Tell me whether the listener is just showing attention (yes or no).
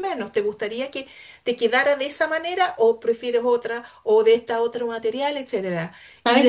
no